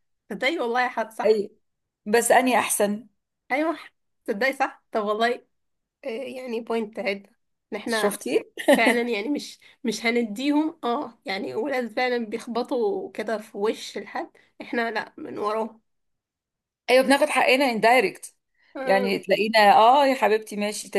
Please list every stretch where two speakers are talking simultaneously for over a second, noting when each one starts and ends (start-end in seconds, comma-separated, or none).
none